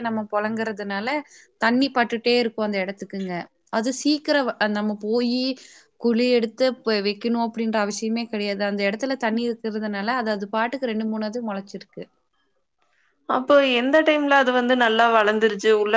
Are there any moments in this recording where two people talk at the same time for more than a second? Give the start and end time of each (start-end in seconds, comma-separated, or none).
none